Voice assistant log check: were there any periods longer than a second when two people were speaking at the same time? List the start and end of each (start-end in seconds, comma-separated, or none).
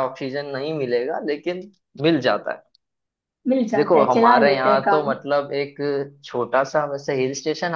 3.7-5.1